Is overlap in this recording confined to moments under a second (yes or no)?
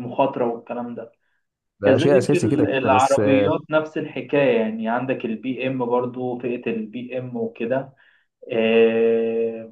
no